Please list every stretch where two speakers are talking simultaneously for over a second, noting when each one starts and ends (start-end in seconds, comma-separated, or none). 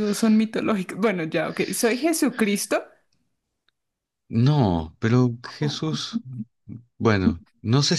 none